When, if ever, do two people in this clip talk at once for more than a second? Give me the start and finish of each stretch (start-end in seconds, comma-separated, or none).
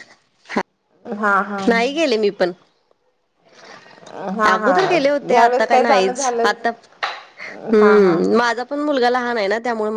4.5-6.6